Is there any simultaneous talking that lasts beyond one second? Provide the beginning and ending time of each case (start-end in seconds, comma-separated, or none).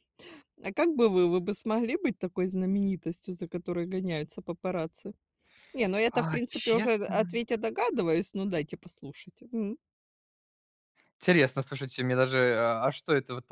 6.1-7.3